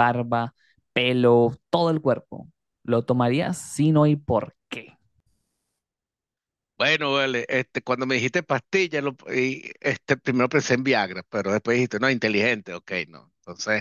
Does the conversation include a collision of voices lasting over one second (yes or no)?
no